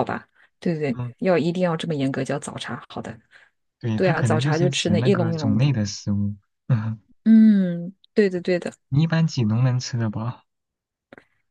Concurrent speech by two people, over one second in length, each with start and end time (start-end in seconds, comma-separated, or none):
4.0-5.7